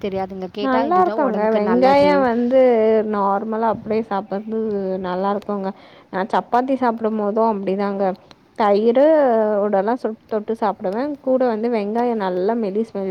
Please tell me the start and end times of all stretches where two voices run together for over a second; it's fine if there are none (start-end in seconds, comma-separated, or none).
0.7-2.1